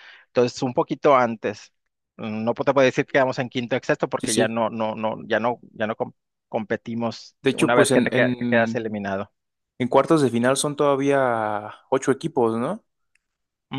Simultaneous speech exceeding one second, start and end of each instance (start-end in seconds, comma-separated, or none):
7.4-8.8